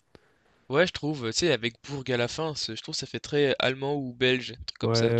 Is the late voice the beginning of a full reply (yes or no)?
yes